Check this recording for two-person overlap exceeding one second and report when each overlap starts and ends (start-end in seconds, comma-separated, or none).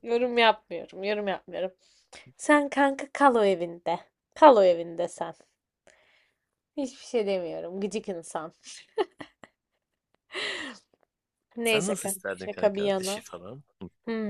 11.6-13.2